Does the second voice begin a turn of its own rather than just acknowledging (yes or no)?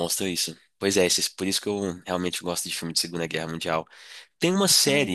no